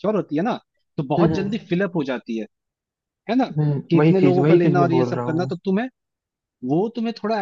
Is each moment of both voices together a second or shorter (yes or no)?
no